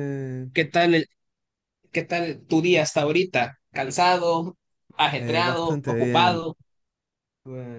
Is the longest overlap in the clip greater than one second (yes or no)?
yes